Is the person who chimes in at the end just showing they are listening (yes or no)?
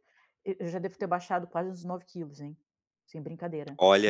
no